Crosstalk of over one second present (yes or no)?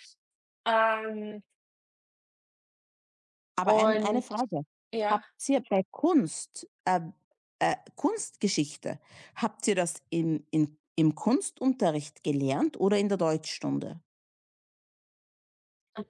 no